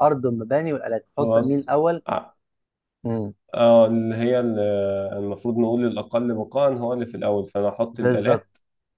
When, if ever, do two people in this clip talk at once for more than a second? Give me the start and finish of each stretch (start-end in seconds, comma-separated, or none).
none